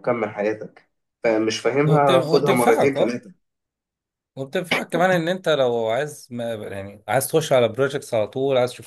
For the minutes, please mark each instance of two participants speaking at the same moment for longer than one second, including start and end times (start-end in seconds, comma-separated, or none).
1.9-3.1